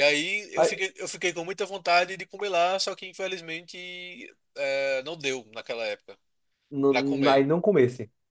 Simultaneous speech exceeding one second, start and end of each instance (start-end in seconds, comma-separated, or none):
none